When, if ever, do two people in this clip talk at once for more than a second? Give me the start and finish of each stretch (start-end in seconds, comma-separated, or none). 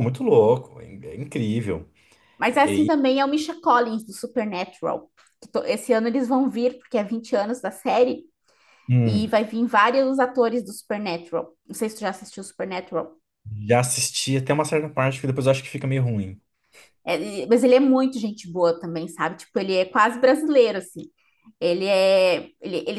none